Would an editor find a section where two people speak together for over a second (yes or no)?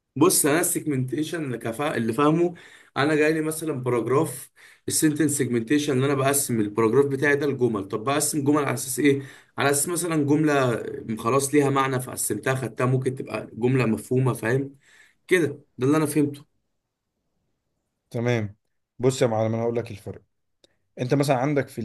no